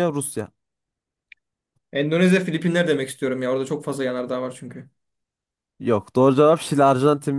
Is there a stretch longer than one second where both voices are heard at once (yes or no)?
no